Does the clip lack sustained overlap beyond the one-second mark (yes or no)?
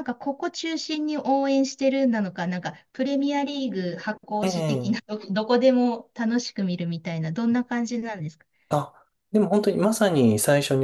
yes